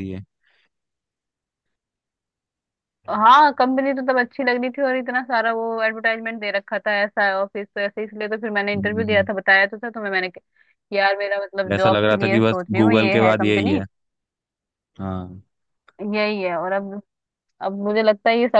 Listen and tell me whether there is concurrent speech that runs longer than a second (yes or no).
yes